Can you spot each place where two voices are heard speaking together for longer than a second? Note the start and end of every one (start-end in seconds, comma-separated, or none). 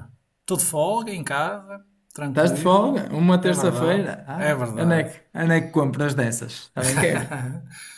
2.3-5.1